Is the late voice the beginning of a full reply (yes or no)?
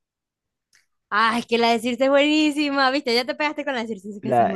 yes